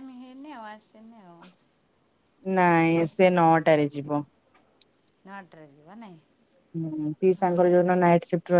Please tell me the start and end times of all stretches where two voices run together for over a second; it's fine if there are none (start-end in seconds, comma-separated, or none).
none